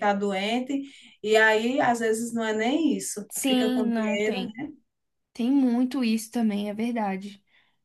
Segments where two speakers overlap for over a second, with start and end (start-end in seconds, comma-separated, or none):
3.3-4.5